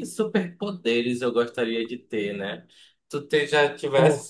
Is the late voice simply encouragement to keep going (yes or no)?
yes